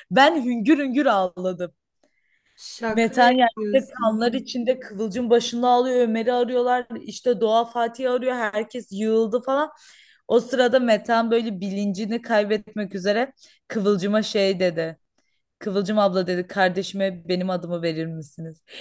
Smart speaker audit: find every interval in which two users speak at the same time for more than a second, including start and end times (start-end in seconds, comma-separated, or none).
2.9-4.3